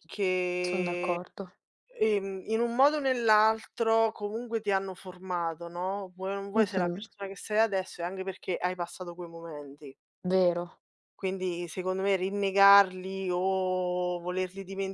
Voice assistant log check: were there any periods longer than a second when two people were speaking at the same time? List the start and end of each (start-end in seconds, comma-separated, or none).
none